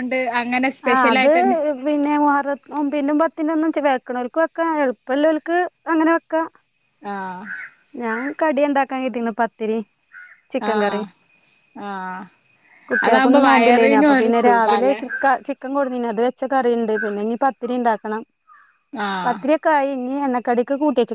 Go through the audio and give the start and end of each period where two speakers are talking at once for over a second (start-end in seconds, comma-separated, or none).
13.0-15.0